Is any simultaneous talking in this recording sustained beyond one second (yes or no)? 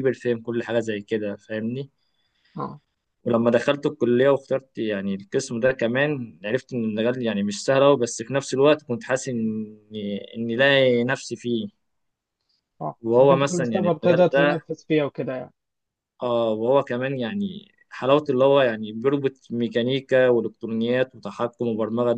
yes